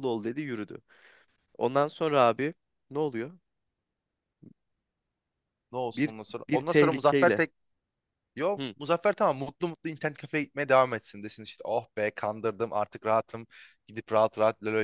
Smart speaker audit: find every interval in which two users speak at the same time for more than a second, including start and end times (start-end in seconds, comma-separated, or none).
6.0-7.4